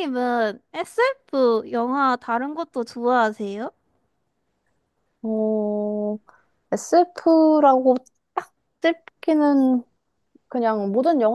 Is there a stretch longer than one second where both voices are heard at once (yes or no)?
no